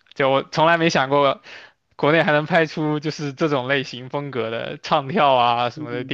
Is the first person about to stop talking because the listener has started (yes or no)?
yes